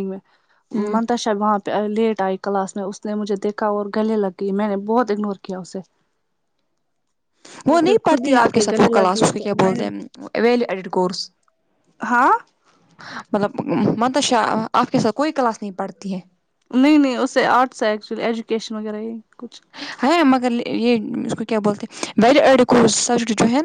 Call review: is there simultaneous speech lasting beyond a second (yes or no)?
yes